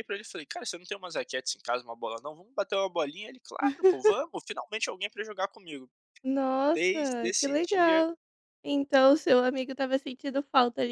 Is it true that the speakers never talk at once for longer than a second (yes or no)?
no